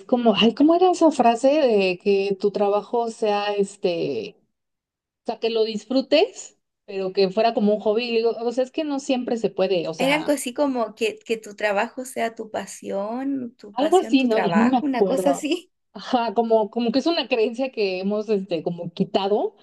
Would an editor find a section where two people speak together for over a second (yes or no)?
yes